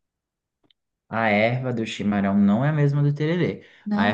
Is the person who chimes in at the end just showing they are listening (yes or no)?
yes